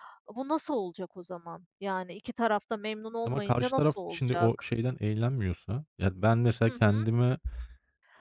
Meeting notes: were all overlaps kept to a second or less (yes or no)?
no